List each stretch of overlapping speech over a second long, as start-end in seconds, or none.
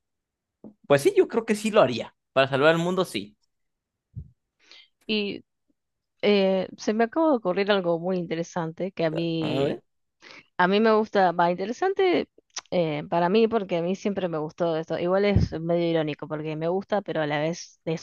none